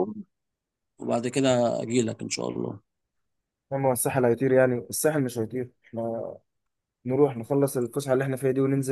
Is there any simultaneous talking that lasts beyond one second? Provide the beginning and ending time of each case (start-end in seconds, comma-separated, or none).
none